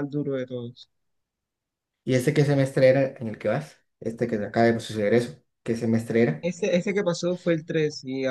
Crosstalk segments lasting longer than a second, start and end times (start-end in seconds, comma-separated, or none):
none